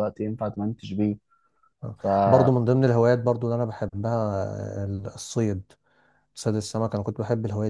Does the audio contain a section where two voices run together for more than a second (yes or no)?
no